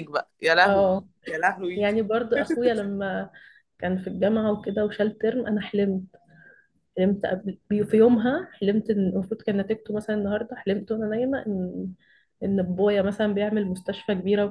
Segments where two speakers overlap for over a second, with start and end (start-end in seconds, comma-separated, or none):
none